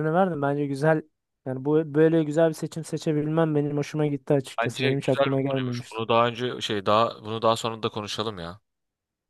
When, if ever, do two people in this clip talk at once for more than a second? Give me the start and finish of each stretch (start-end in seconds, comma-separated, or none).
4.6-6.0